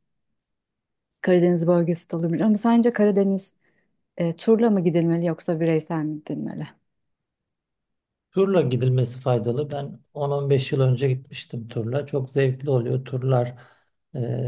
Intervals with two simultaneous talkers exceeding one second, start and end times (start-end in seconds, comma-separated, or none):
none